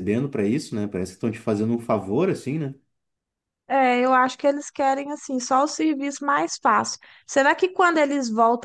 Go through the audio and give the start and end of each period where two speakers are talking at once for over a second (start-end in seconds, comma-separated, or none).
none